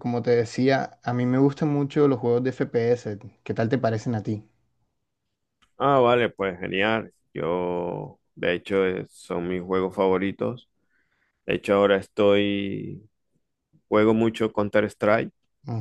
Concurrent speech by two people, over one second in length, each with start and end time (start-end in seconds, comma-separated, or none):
none